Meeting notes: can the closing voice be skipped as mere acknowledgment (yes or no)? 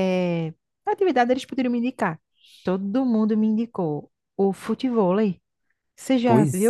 no